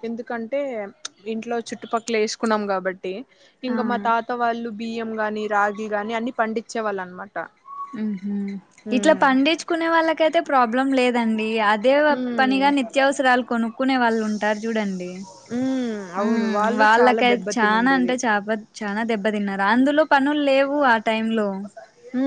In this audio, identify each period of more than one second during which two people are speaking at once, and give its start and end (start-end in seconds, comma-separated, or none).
16.2-18.1